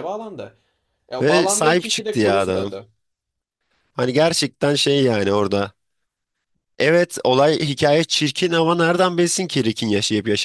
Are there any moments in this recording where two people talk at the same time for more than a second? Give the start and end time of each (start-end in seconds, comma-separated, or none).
1.2-2.7